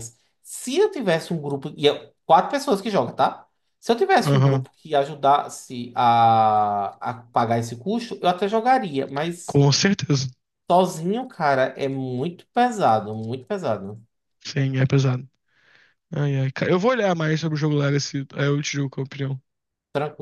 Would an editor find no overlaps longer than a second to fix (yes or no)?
yes